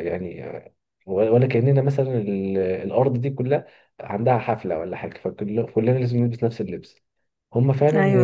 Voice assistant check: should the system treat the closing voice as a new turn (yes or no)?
no